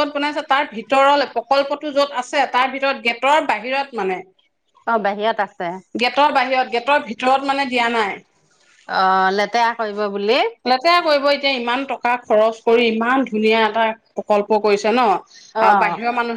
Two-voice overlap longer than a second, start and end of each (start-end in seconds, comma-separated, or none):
none